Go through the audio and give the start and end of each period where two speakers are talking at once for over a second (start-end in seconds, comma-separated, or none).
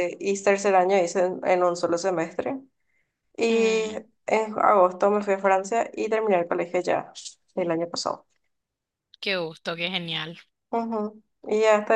none